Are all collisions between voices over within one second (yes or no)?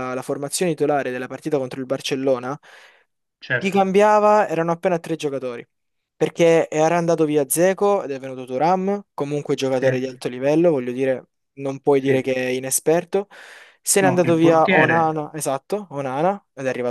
no